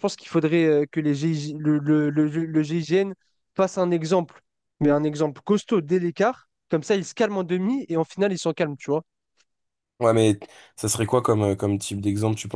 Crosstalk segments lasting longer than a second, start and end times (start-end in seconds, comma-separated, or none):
none